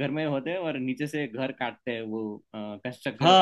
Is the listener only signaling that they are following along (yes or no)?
no